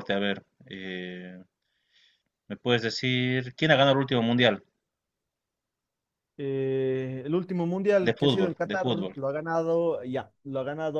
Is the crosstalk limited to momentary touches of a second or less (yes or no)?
no